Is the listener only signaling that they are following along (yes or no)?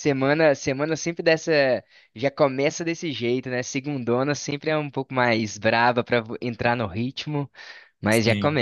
yes